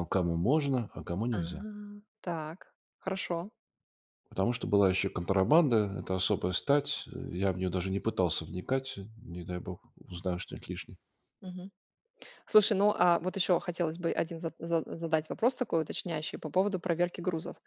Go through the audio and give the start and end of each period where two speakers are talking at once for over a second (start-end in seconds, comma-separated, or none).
none